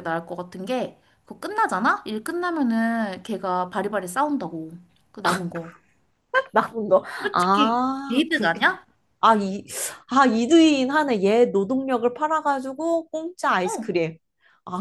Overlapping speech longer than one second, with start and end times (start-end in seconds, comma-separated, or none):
7.2-8.6